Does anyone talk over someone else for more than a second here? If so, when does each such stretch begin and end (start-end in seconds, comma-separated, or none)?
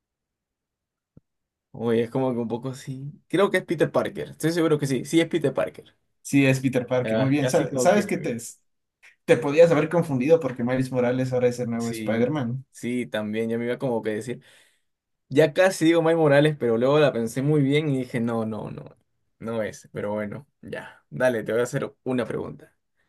7.0-8.3